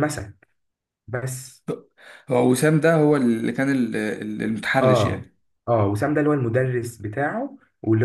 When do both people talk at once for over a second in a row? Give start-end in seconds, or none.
none